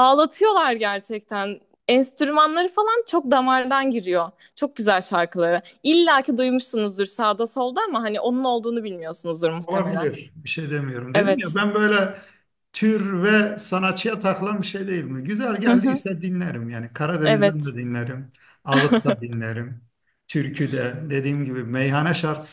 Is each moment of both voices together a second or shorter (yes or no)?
yes